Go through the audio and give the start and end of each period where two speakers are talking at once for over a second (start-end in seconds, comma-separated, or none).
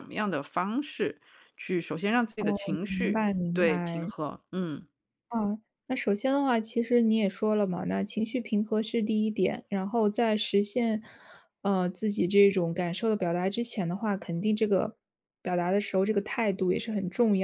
2.4-4.1